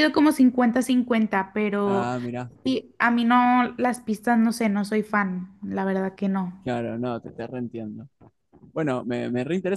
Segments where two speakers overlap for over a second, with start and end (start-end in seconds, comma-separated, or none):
none